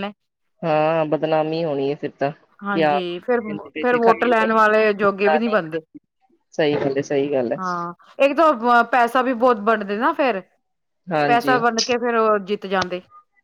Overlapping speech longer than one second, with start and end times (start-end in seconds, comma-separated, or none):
2.7-4.5